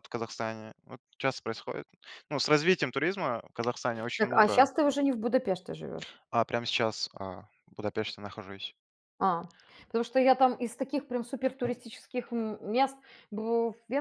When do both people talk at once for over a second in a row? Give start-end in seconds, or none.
none